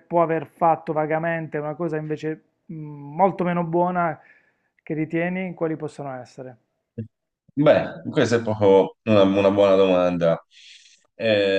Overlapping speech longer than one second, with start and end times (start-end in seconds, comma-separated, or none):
none